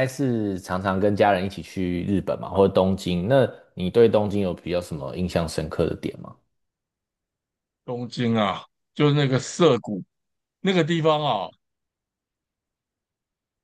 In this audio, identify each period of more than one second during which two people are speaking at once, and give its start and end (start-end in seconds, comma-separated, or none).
none